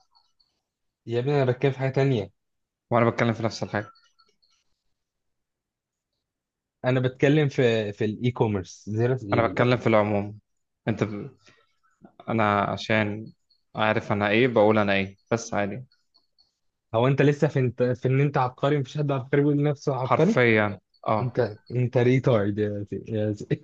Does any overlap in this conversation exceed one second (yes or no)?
no